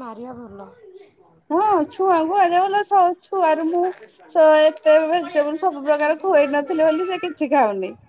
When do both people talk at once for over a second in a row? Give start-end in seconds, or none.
5.2-7.0